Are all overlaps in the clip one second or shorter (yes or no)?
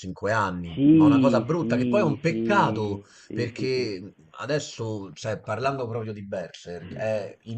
no